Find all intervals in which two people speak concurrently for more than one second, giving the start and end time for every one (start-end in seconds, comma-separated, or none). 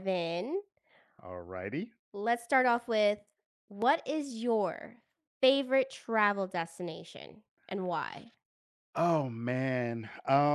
none